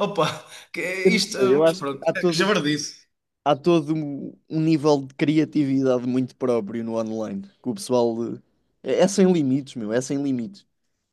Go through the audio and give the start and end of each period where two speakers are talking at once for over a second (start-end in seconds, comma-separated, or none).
1.1-2.5